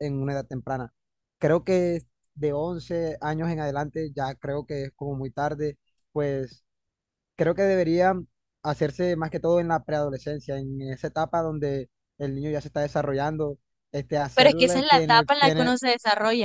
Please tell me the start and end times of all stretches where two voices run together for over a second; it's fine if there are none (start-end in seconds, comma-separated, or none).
14.3-15.8